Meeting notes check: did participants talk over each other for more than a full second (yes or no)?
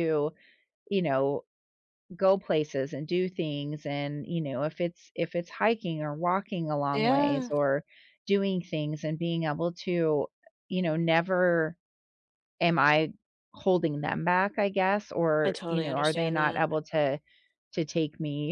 yes